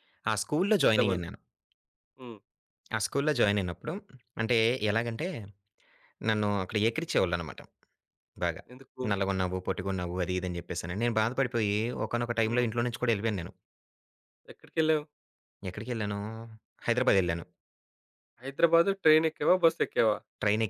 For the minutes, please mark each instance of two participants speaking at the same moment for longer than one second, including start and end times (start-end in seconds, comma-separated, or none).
none